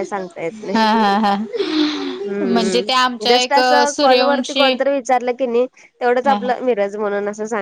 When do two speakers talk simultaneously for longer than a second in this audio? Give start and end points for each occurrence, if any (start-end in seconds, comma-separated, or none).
2.5-4.7